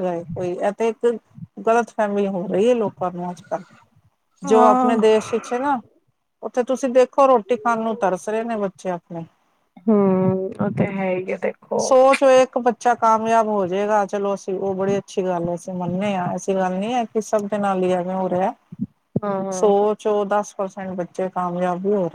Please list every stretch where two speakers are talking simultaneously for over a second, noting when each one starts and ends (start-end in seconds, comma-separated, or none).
none